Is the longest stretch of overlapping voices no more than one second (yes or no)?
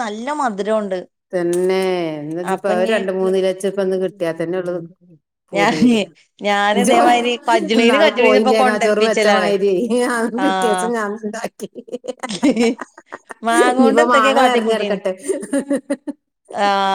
no